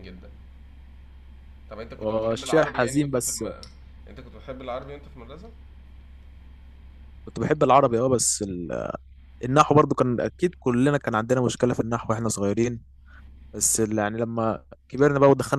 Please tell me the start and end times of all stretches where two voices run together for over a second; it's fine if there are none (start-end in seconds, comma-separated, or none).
2.0-3.4